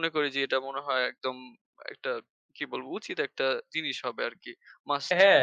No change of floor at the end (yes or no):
no